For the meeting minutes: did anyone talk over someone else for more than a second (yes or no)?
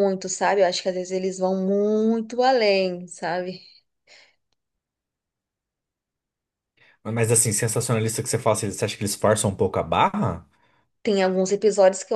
no